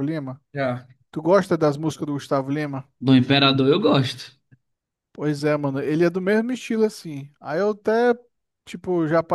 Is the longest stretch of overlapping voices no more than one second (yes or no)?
yes